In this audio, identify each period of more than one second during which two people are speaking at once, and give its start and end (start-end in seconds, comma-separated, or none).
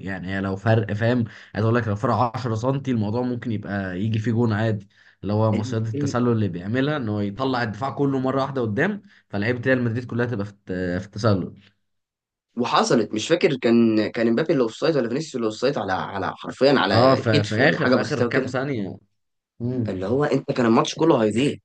16.9-18.6